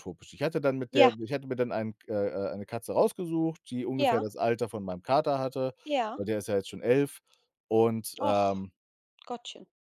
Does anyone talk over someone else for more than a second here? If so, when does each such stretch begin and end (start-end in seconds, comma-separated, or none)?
none